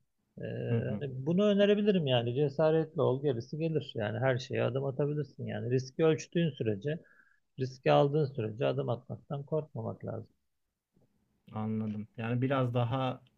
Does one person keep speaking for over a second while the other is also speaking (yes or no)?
no